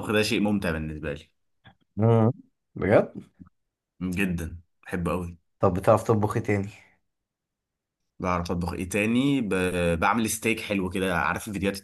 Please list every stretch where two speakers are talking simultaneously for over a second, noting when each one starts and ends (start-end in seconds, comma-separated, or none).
none